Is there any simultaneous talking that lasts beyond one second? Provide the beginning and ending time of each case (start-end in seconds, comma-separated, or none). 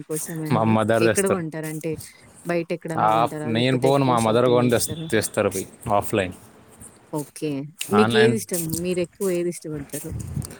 3.1-5.1